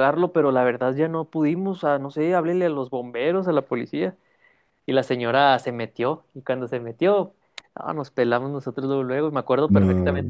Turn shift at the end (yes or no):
no